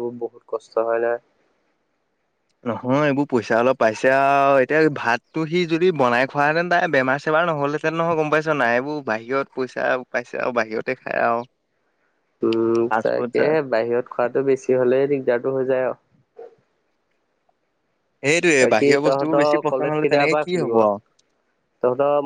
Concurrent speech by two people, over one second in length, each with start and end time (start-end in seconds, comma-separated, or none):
18.6-20.7